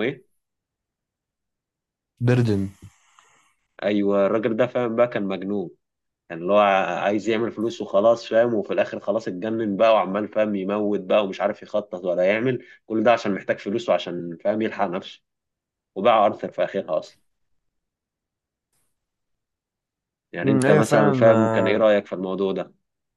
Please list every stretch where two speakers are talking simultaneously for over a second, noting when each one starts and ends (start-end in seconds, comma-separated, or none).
20.4-21.9